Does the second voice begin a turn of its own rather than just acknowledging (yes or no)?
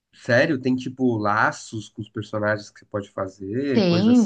yes